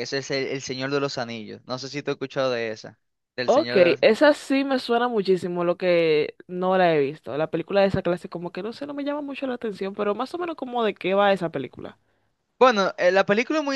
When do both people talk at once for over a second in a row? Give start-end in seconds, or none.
none